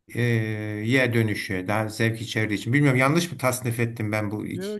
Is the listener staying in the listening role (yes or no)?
no